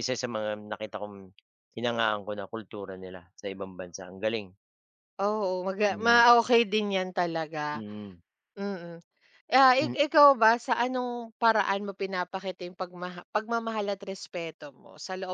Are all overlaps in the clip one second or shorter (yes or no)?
yes